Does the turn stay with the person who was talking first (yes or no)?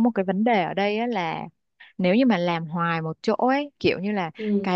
yes